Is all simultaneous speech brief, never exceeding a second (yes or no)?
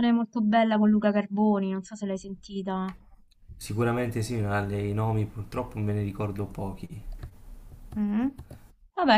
yes